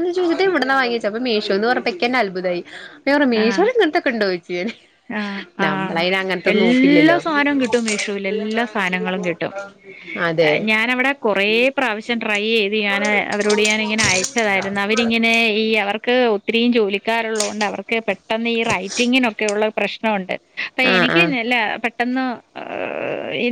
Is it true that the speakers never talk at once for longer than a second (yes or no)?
yes